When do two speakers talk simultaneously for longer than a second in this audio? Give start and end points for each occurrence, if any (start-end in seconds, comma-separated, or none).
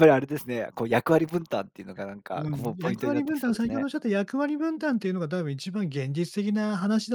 2.4-3.9